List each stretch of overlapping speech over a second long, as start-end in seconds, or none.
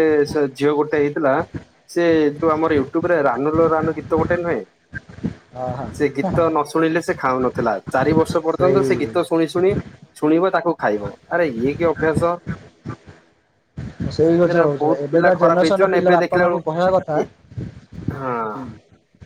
14.5-16.6